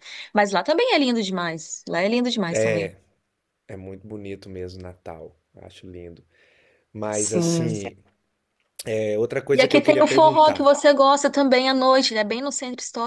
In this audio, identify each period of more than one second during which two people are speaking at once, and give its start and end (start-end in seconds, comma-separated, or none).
9.5-10.7